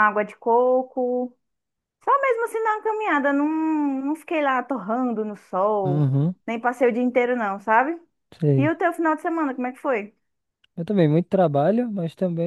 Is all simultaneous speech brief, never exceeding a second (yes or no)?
yes